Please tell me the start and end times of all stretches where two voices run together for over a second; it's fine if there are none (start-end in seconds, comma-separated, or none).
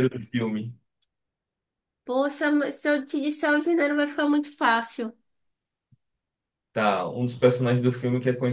none